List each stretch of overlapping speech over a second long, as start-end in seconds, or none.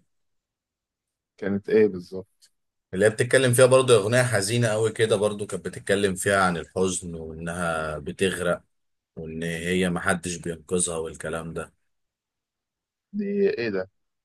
none